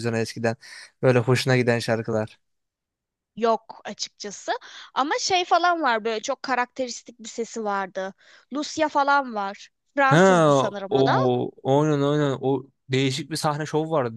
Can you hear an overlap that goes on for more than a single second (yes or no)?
no